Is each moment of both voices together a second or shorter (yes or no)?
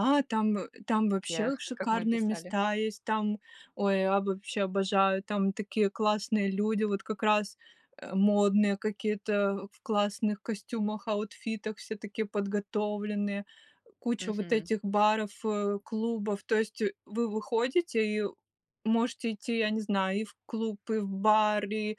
no